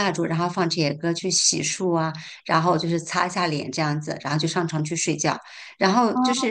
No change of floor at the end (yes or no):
yes